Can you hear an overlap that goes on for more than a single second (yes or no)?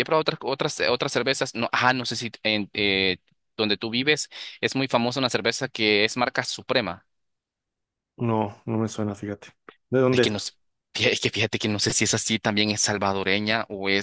no